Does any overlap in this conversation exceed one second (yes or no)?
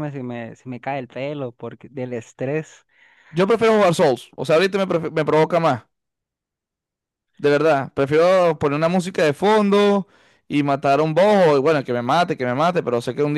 no